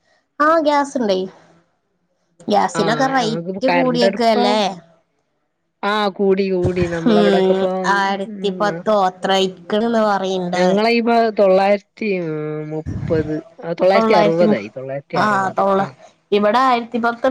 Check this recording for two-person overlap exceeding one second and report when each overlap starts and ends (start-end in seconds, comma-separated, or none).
2.8-4.5